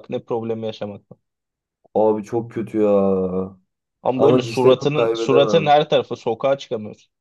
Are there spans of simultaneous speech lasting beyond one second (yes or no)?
yes